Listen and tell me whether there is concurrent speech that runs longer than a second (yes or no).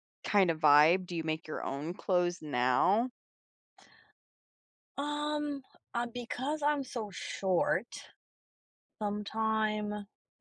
no